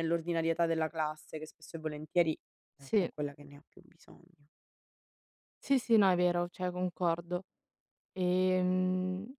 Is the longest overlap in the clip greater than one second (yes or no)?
no